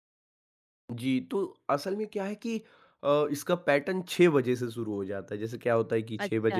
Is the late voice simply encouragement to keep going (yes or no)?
yes